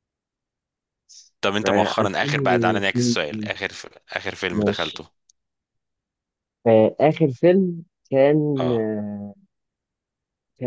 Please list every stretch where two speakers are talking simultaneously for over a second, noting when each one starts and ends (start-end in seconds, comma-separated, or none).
1.6-3.2